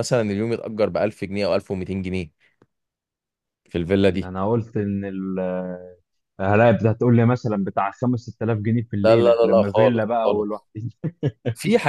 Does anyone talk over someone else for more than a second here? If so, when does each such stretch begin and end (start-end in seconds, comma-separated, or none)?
9.0-10.6